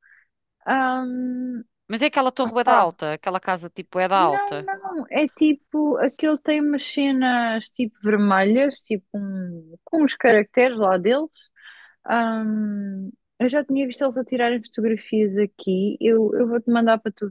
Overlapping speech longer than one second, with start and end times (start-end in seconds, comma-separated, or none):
none